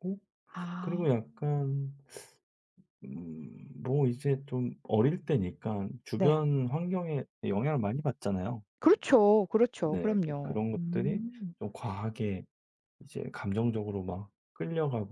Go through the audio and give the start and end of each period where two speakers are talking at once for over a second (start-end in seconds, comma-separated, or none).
9.8-11.2